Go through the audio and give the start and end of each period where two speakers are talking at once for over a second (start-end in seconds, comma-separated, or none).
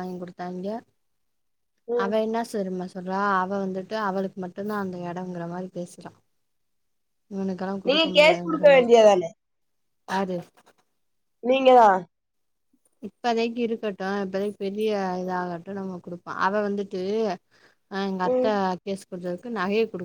none